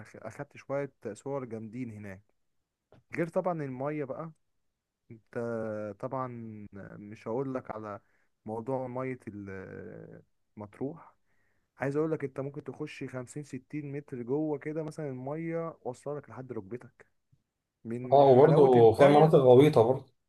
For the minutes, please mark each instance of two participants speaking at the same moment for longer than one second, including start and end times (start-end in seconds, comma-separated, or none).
18.1-19.4